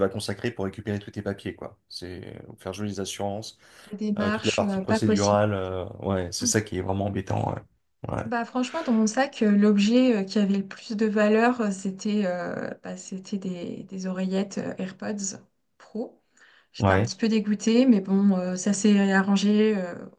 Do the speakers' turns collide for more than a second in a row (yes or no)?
yes